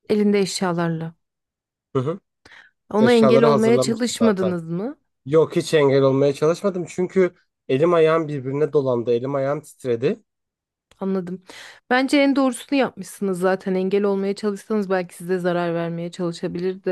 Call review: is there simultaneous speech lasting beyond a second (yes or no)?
yes